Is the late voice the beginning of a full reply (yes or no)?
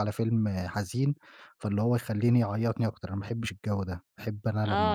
yes